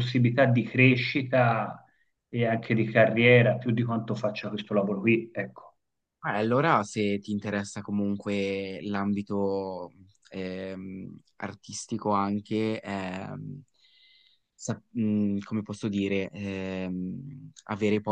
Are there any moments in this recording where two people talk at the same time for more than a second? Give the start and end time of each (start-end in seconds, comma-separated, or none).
none